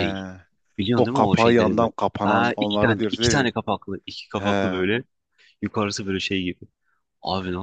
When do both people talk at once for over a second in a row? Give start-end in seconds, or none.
1.0-3.5